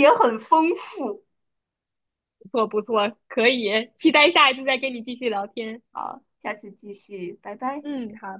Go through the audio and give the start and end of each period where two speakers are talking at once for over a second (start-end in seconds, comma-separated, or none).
none